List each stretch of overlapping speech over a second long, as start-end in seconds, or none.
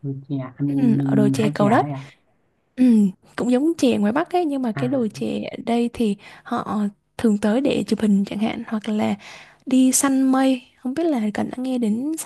0.7-1.9